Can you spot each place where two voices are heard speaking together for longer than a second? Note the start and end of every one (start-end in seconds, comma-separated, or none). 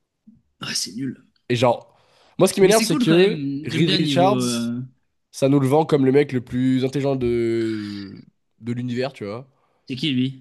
2.6-4.4